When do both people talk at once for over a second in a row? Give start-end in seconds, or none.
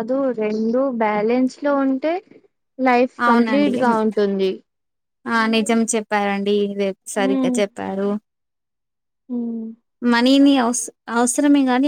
none